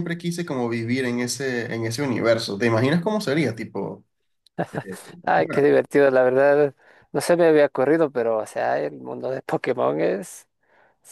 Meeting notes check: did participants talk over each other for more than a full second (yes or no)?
no